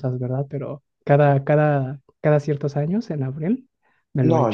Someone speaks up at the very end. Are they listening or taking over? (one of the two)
taking over